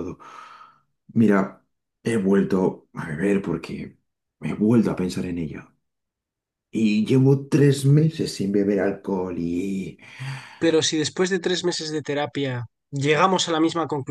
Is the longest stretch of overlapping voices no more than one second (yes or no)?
yes